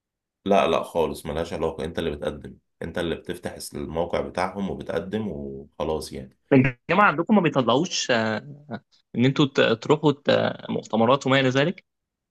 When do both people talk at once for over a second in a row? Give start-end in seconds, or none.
none